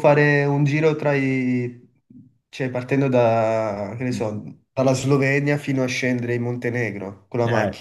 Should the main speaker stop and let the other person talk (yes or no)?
yes